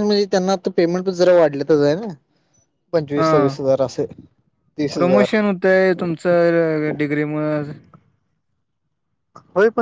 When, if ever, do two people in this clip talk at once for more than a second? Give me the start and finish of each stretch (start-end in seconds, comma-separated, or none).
none